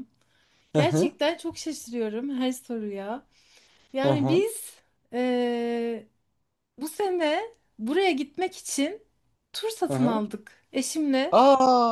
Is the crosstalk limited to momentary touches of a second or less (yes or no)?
yes